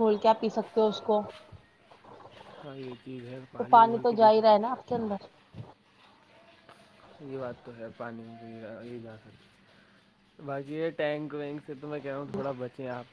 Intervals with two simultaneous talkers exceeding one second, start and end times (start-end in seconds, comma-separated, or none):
none